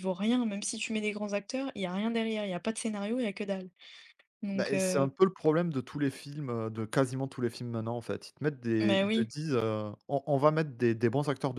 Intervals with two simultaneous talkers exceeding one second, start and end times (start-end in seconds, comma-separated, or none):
none